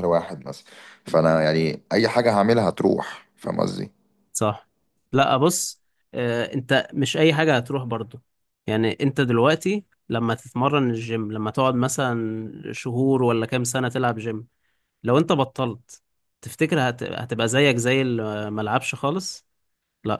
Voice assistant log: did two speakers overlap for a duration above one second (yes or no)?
no